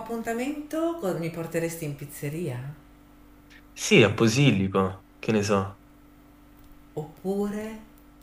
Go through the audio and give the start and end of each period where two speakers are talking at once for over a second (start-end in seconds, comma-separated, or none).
none